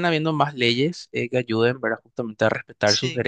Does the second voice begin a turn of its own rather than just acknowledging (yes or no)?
no